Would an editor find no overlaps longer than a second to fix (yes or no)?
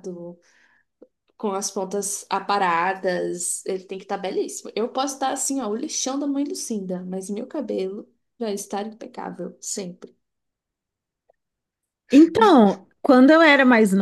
yes